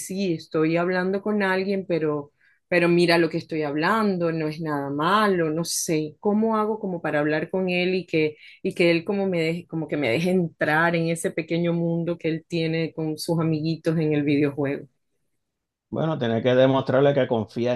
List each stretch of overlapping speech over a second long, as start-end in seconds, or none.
none